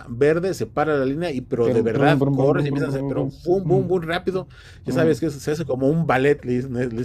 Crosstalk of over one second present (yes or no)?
yes